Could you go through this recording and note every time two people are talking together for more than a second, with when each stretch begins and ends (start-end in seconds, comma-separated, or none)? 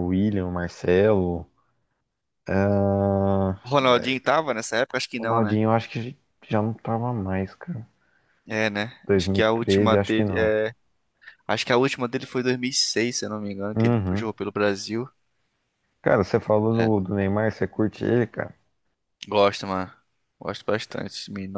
9.1-10.5